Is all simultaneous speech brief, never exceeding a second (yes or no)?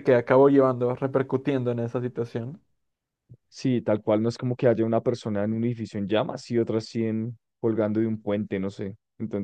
yes